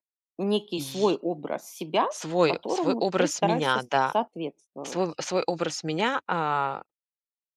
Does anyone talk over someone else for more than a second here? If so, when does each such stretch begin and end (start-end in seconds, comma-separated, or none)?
2.4-4.2